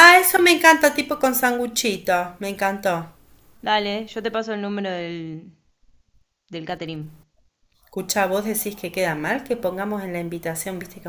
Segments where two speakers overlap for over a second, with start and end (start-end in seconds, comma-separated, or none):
none